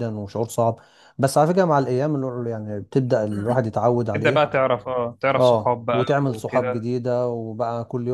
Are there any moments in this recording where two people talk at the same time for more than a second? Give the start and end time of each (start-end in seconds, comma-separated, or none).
5.3-6.9